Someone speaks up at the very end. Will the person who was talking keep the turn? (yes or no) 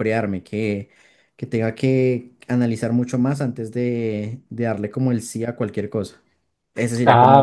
no